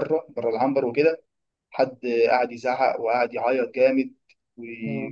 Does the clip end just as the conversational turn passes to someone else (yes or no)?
no